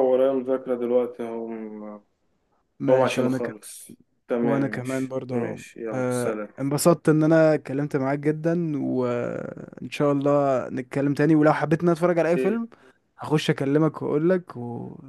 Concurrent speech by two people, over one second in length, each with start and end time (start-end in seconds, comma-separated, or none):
4.4-6.5